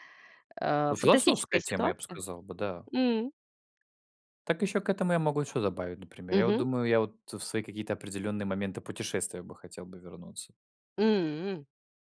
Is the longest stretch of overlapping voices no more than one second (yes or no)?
no